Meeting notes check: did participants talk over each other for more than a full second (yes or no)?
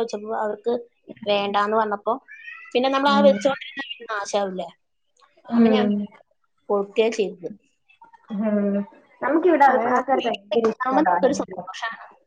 yes